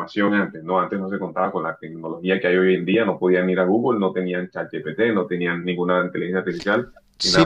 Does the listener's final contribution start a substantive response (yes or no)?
yes